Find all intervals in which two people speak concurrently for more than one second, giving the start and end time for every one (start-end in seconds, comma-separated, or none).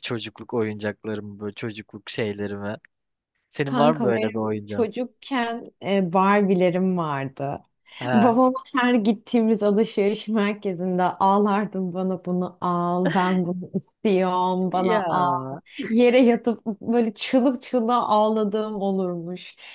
3.7-4.9